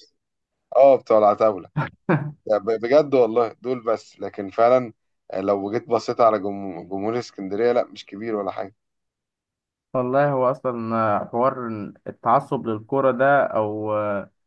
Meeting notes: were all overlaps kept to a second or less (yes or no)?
yes